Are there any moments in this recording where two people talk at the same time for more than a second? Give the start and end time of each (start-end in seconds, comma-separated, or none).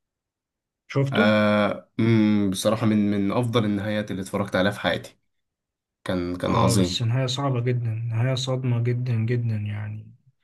none